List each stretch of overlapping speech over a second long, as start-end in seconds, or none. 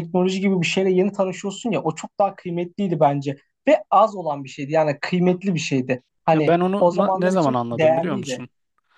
6.3-8.4